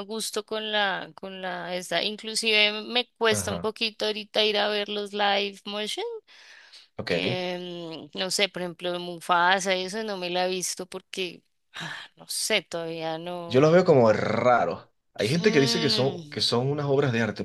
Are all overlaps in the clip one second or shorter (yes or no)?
no